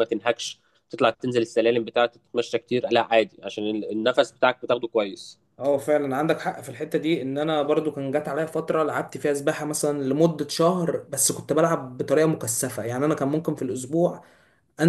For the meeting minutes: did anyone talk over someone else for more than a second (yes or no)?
no